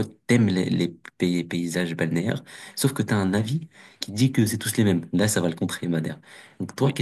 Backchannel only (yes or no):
no